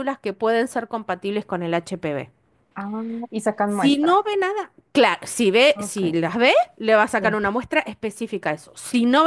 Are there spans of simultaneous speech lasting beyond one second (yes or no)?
no